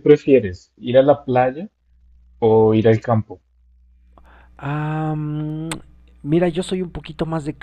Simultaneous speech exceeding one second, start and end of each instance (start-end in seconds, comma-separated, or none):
none